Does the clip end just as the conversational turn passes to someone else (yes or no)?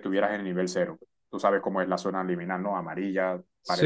yes